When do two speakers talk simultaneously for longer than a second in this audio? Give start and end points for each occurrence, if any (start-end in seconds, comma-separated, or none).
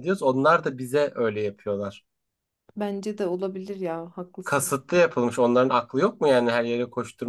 none